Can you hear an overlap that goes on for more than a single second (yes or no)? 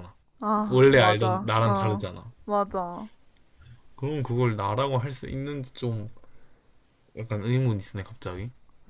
yes